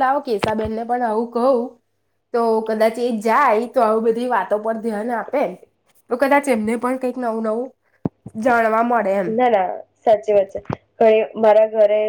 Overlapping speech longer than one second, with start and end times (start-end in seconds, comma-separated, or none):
none